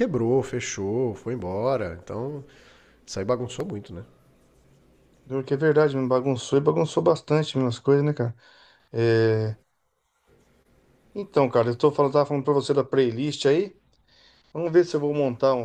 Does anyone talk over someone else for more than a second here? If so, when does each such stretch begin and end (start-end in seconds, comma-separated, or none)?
none